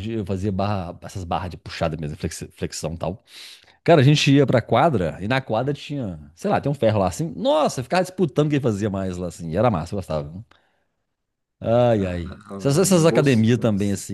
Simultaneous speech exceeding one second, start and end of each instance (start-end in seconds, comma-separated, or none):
12.0-13.5